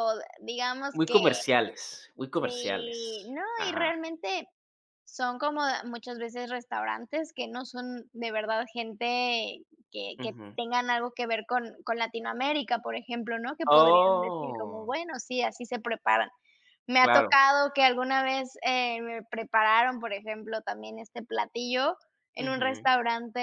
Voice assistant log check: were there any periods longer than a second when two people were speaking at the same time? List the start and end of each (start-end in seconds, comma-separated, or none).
2.3-3.9, 13.7-14.9